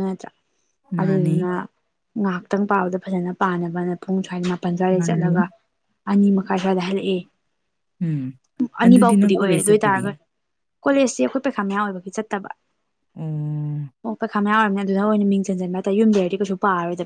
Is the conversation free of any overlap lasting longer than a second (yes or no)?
no